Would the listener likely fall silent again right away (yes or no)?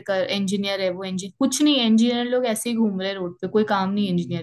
no